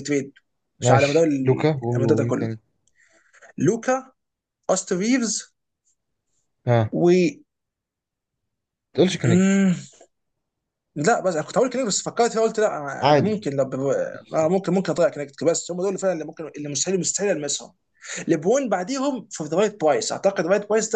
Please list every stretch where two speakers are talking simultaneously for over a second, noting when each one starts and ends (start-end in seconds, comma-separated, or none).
0.8-2.5